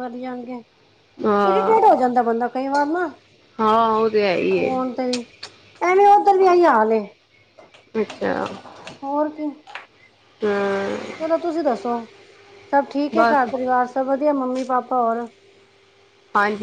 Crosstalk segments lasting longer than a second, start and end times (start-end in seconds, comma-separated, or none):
none